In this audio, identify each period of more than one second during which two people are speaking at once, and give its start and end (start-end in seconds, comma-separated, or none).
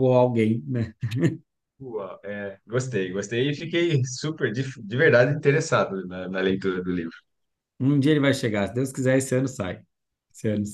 none